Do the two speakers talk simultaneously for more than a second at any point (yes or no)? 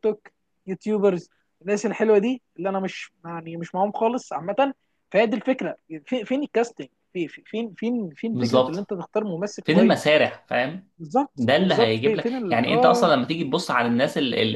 yes